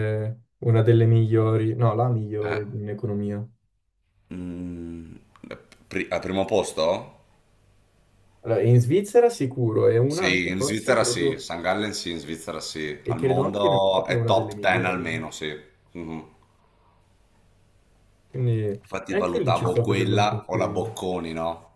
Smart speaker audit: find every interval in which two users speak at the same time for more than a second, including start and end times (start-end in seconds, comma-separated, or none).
10.1-11.5, 13.0-15.2, 18.8-20.9